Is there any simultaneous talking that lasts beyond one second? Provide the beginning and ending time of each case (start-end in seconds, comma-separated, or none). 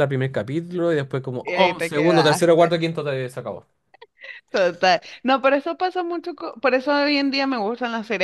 1.4-2.8